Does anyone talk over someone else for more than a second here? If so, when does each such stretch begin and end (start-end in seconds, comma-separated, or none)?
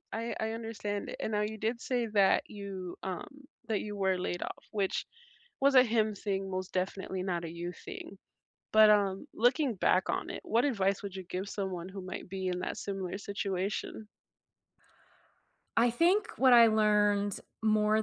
none